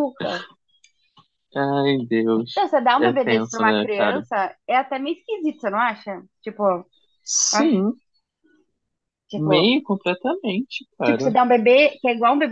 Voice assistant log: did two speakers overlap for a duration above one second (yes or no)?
yes